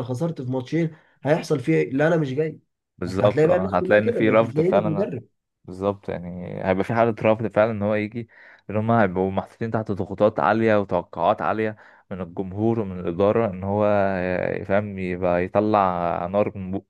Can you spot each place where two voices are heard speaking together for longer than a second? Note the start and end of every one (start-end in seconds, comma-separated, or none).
3.1-5.1